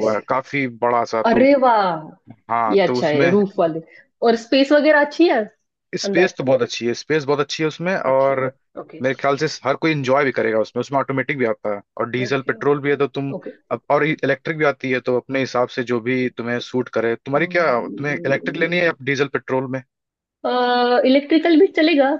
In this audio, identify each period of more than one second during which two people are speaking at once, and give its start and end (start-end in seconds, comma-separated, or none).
none